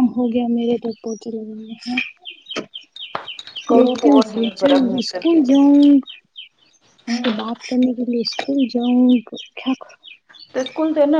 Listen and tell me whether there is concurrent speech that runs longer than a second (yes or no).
yes